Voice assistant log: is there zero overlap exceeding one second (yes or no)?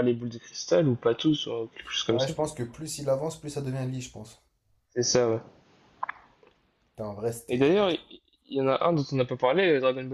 yes